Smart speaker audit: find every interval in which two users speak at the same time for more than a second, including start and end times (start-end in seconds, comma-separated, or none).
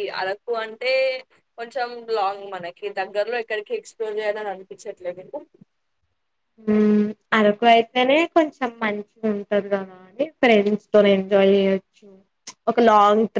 none